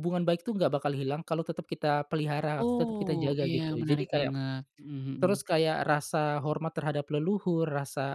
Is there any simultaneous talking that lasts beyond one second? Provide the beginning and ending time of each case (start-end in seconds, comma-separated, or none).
2.6-4.3